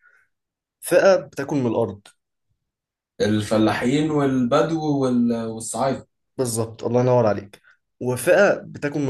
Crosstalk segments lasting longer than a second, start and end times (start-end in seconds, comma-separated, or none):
none